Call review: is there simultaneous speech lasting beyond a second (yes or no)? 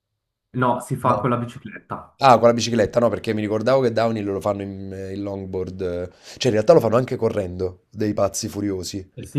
no